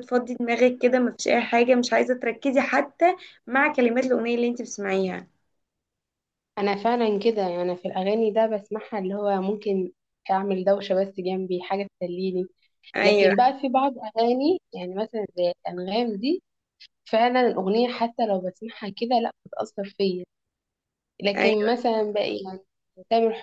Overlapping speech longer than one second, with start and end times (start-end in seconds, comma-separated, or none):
none